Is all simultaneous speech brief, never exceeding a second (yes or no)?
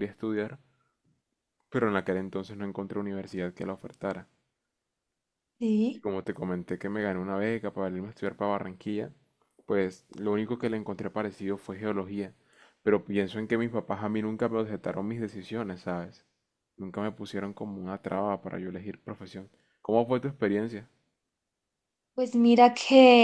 yes